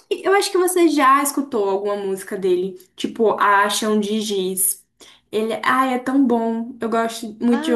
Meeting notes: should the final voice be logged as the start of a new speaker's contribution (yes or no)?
yes